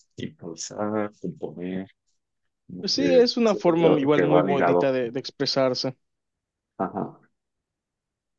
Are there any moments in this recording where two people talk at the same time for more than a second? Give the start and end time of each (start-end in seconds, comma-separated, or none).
2.8-4.9